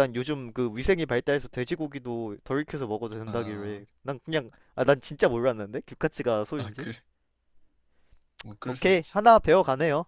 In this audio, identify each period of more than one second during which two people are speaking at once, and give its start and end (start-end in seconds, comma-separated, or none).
none